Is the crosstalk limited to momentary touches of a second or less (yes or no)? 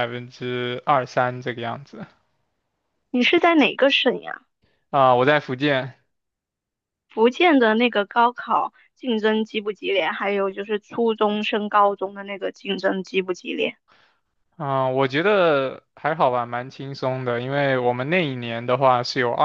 yes